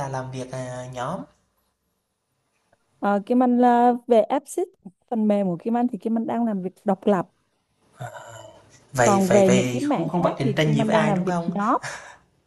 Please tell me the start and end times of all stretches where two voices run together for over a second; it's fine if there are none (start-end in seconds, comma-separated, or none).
9.0-11.6